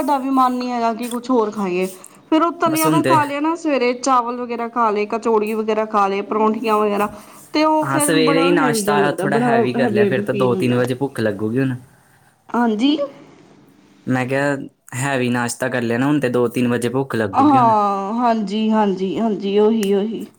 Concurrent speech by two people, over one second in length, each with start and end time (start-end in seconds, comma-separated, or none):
7.8-10.8